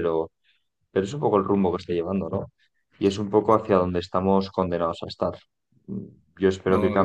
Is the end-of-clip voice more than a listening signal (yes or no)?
no